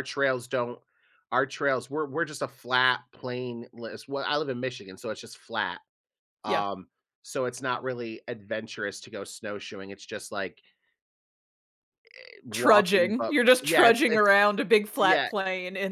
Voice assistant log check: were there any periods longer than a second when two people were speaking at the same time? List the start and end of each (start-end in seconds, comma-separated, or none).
12.5-14.3